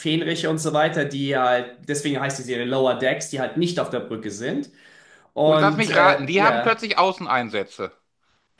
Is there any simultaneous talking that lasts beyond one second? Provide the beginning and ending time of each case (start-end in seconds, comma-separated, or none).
5.4-6.8